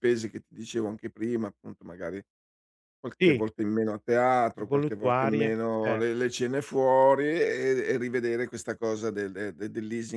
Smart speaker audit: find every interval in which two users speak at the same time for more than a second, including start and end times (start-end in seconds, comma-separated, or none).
4.6-6.0